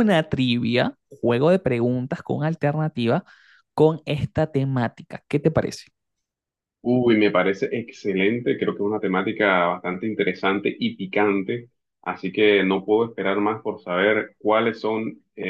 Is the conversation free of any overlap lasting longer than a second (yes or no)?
yes